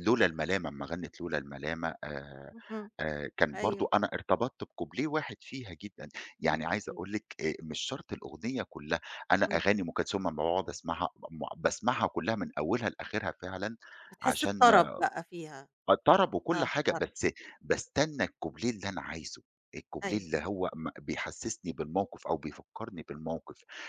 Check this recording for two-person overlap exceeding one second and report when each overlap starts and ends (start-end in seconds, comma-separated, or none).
none